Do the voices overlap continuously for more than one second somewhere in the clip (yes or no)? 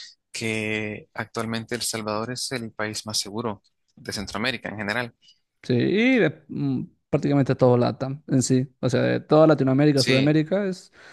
no